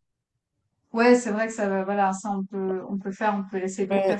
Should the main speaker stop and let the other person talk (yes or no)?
yes